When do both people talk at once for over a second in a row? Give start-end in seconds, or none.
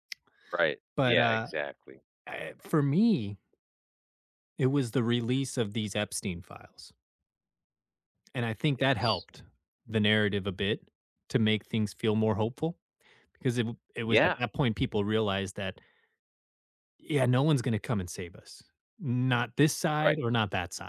none